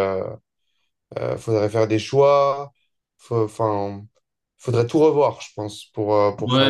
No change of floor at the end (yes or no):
no